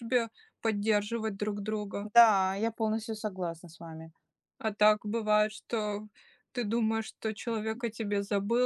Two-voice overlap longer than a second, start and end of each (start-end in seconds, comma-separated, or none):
none